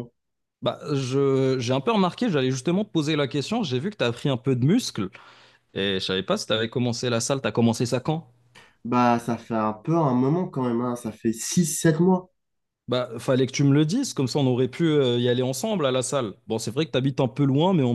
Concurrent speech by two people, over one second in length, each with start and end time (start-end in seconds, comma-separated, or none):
none